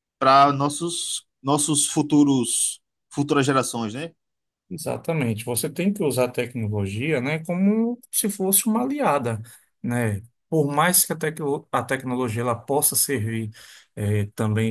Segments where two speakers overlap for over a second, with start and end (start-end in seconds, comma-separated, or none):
none